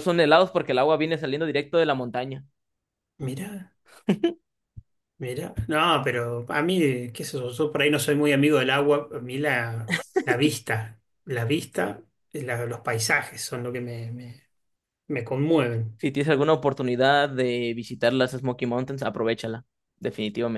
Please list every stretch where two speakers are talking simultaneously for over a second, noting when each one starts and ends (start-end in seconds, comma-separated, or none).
none